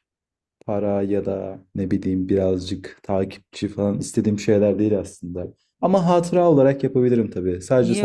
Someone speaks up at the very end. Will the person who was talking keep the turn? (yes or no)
no